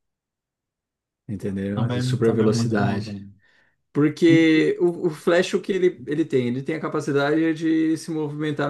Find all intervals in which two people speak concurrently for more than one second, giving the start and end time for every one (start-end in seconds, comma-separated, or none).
1.7-3.2